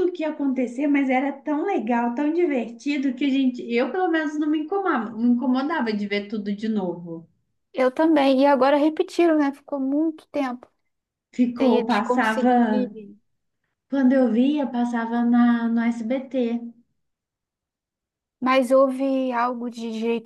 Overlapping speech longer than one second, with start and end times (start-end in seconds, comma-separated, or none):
11.6-12.9